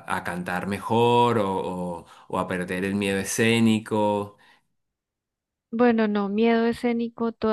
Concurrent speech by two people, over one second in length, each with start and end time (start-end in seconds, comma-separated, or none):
none